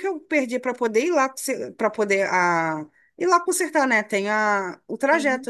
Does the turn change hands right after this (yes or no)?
no